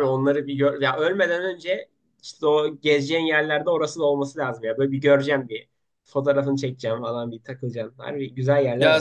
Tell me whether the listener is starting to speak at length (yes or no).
yes